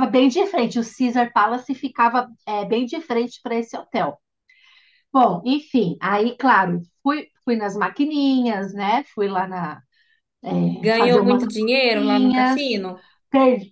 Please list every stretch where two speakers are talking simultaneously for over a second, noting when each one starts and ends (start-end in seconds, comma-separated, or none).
10.7-12.6